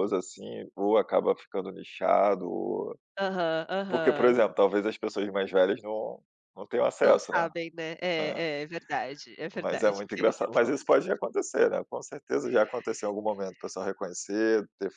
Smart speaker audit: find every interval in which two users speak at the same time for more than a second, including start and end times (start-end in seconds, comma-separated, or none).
9.5-10.8